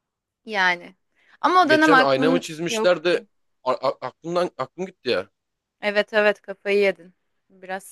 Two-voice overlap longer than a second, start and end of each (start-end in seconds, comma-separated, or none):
1.7-3.1